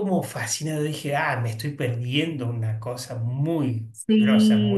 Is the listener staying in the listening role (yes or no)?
no